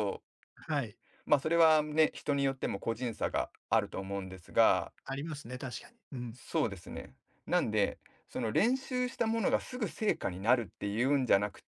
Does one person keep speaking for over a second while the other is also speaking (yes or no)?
no